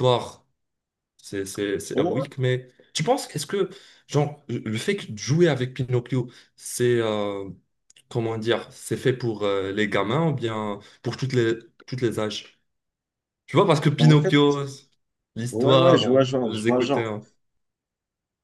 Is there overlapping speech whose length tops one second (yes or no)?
yes